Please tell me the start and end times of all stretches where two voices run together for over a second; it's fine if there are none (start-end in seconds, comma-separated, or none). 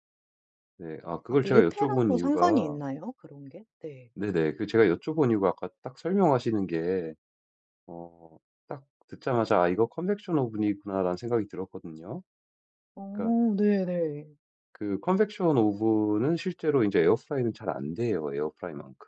1.3-2.8